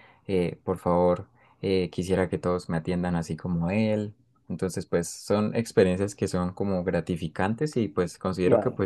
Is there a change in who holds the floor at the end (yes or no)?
no